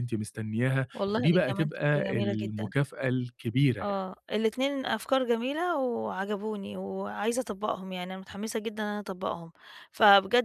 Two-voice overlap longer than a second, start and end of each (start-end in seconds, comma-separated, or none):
0.9-2.7